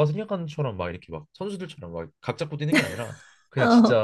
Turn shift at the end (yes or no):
no